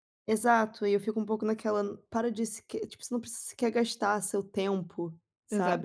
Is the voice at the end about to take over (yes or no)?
yes